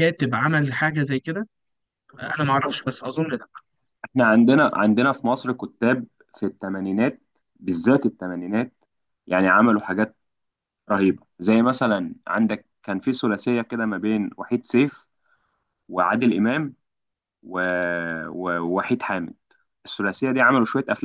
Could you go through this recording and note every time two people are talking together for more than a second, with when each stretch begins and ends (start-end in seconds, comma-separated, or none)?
none